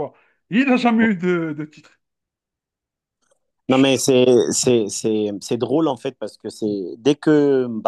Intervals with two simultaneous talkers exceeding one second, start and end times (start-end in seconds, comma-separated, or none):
none